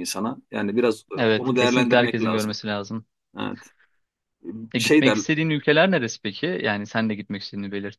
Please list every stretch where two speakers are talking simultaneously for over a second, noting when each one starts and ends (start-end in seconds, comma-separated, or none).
1.2-2.5